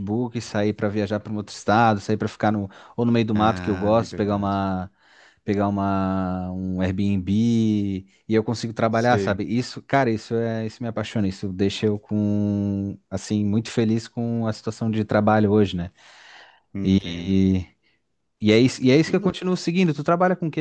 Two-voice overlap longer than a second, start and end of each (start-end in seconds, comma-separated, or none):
3.3-4.6